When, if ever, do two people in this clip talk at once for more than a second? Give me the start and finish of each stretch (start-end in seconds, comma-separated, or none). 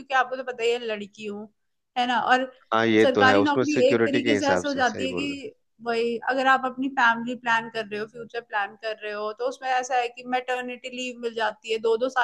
3.0-5.4